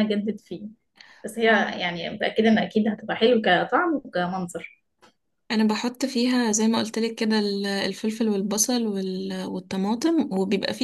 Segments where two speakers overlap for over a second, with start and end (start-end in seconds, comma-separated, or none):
none